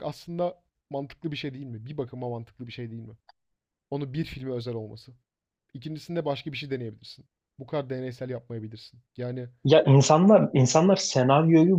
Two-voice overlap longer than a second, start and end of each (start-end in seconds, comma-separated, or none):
none